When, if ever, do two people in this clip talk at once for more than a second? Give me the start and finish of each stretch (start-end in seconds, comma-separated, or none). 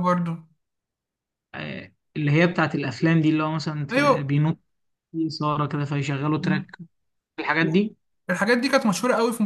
none